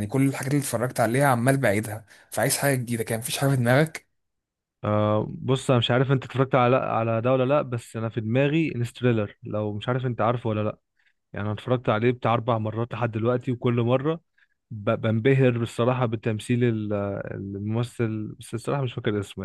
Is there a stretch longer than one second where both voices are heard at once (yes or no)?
no